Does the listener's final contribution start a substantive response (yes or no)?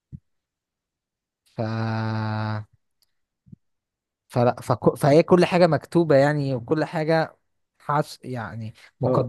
yes